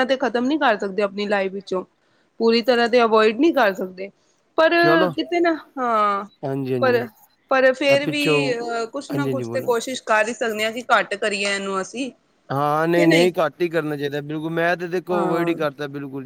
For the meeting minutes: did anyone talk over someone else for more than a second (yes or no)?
yes